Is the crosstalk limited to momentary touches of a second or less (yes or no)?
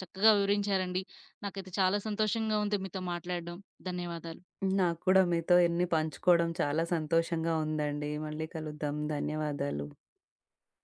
yes